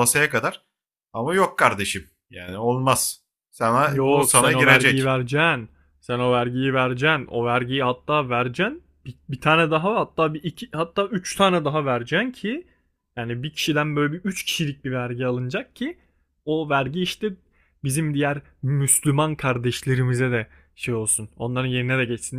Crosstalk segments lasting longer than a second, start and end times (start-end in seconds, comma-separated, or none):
3.9-5.2